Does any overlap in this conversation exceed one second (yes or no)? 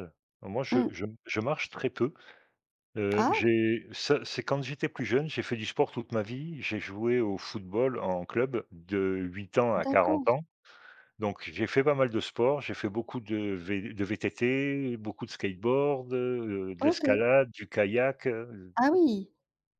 no